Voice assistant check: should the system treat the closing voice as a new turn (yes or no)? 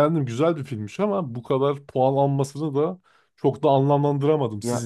yes